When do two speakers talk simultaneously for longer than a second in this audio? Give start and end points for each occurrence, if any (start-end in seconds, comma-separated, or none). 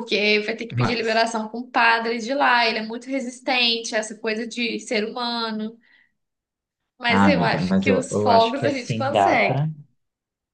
7.1-9.6